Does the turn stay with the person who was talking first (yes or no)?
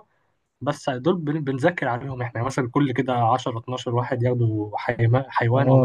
no